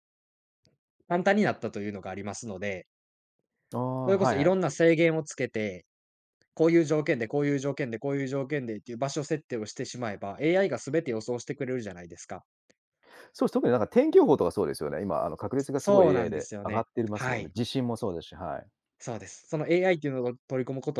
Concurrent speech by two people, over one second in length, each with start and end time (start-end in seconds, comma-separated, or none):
15.8-17.6